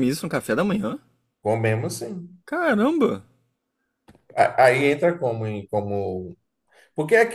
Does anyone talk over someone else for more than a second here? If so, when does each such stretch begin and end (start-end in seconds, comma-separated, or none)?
none